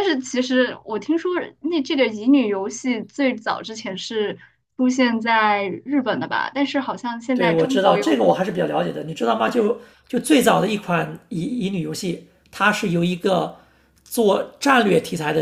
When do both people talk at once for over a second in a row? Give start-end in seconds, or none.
7.3-8.6